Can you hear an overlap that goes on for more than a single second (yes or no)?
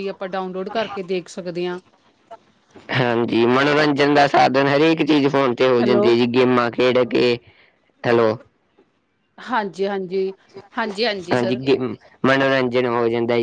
no